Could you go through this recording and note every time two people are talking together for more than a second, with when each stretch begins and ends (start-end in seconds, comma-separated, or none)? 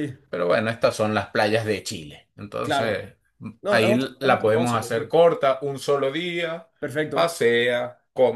3.7-5.1